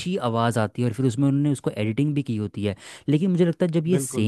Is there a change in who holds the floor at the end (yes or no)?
no